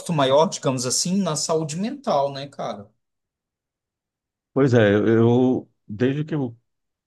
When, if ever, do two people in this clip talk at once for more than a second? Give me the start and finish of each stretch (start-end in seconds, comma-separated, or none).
none